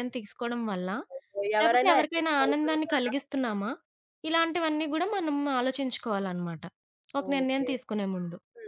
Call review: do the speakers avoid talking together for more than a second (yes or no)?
no